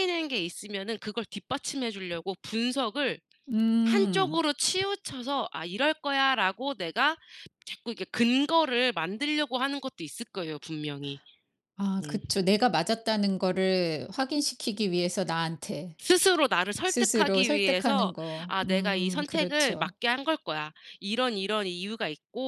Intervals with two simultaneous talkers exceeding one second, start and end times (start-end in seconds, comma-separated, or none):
16.9-19.9